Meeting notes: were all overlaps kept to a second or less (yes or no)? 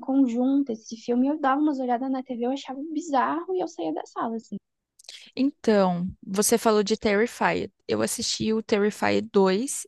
yes